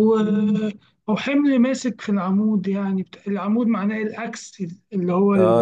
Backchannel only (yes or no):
no